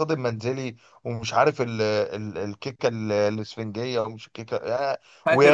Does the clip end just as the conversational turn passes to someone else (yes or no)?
no